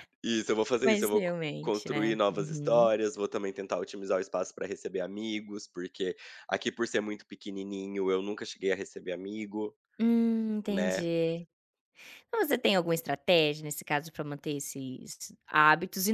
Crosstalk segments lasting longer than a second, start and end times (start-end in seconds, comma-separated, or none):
0.8-2.9